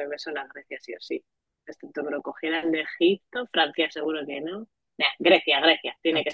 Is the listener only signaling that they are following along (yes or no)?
no